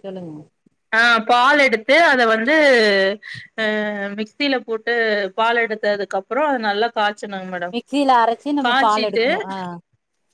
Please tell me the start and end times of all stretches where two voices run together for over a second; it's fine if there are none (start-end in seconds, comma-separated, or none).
none